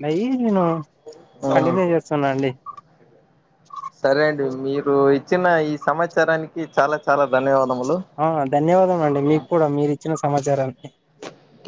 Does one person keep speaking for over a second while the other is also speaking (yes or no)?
no